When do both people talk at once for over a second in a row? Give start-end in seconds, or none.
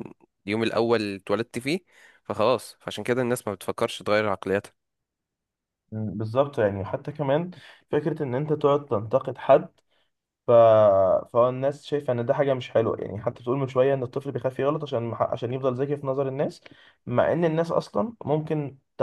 none